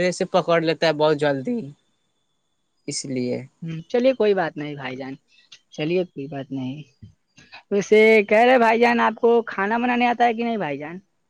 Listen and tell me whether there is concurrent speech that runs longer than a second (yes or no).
no